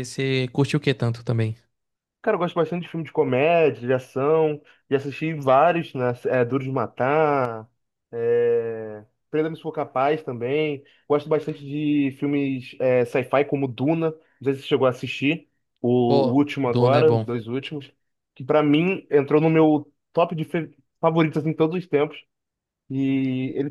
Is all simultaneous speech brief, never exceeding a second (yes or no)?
no